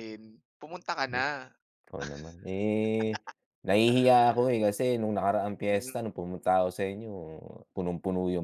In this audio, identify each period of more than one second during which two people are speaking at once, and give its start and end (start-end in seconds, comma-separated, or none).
none